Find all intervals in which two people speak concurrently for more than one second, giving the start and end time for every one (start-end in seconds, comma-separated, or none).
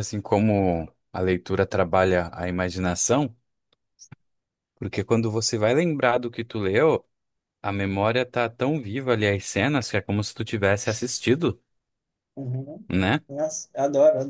none